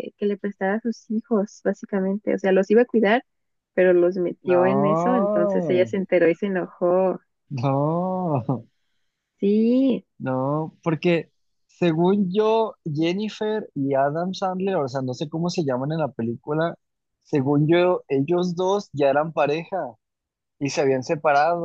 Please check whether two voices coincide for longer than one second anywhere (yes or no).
yes